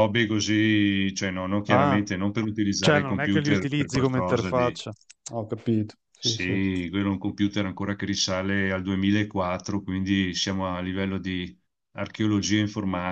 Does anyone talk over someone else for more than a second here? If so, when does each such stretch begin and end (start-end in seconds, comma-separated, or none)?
2.8-4.8